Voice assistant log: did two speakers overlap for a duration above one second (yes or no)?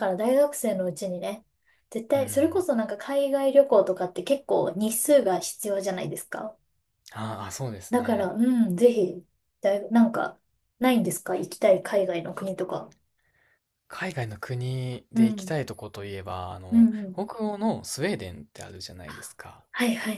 no